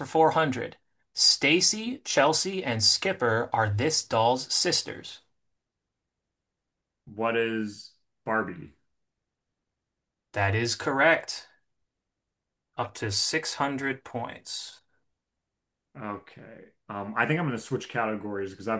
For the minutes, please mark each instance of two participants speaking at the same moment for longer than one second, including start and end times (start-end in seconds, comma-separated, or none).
none